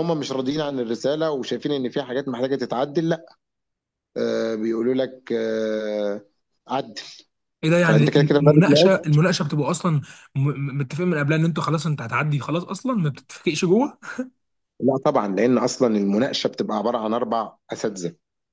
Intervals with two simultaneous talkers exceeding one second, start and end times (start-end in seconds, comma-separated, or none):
7.8-9.1